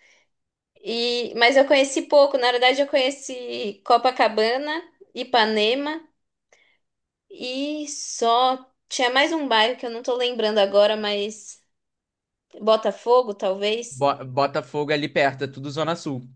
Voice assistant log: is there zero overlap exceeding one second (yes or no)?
yes